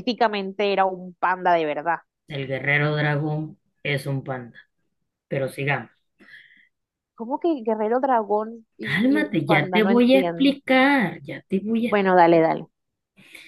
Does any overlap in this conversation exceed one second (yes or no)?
yes